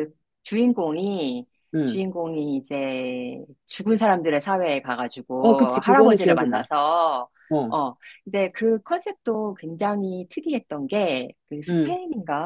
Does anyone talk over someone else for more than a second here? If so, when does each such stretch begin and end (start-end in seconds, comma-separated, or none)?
5.4-6.6